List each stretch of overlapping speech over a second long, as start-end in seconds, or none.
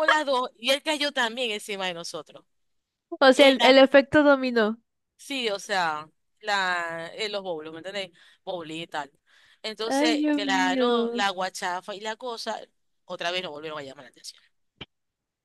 9.9-11.3